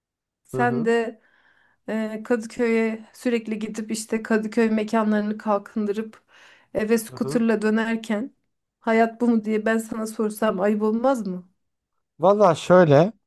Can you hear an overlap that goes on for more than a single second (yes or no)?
no